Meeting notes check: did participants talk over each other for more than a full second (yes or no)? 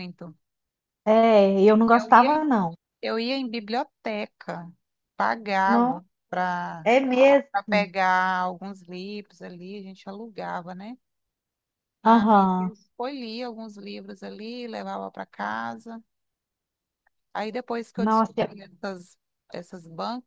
no